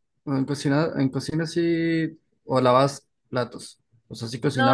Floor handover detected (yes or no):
yes